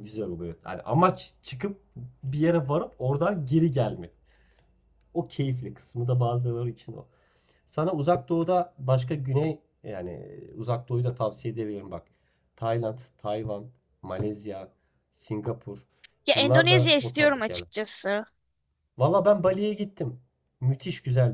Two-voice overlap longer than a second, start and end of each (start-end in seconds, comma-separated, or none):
16.3-17.7